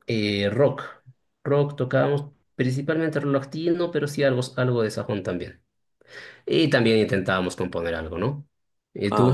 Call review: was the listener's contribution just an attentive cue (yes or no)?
no